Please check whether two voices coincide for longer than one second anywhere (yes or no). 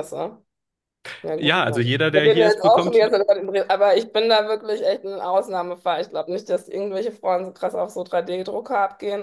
yes